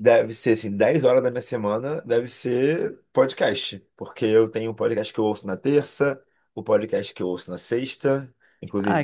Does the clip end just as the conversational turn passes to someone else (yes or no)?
no